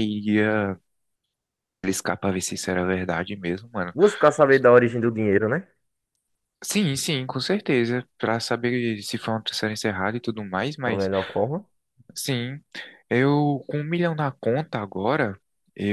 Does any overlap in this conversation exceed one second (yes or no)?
no